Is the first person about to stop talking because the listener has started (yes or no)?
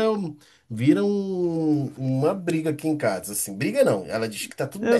no